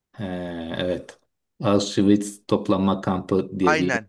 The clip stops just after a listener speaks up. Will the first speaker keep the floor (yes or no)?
no